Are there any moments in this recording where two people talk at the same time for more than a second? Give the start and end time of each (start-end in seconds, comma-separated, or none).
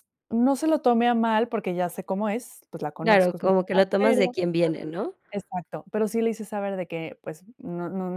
3.0-4.3